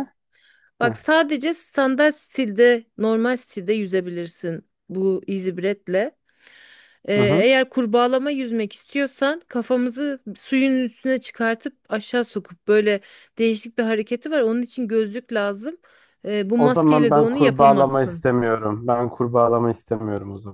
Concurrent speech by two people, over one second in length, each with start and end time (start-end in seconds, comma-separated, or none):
16.6-18.2